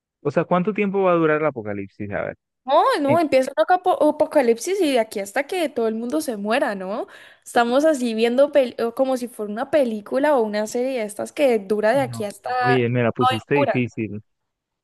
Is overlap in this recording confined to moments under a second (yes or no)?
no